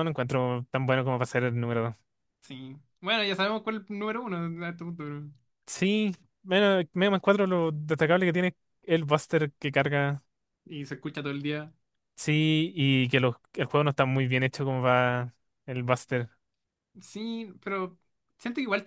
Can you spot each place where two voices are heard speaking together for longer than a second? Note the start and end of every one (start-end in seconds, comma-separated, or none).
none